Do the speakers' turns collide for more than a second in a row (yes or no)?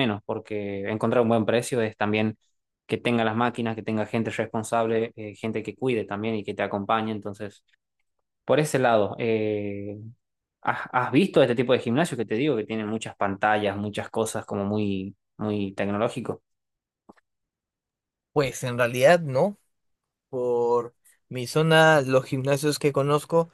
no